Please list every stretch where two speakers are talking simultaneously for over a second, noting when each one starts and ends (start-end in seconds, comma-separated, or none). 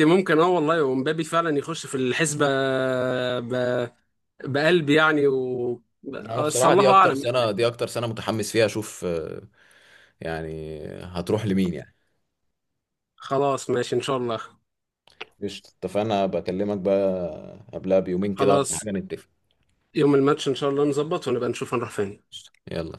6.2-7.5